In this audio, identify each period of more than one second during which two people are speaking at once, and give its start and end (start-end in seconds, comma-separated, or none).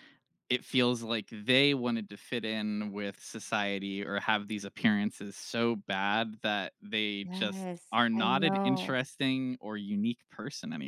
7.2-9.0